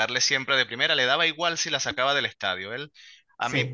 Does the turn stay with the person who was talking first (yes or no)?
yes